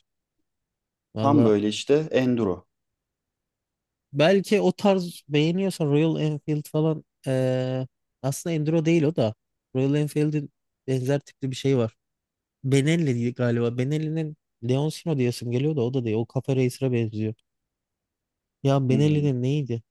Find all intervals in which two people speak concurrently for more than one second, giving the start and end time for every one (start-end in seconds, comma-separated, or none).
none